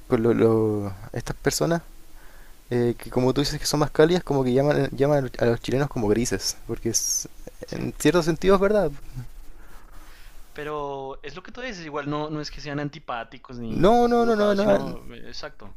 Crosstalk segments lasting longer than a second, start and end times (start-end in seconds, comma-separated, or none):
13.7-15.0